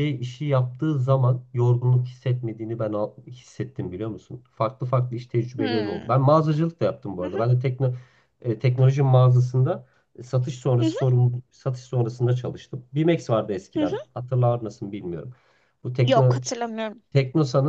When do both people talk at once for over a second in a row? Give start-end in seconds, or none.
none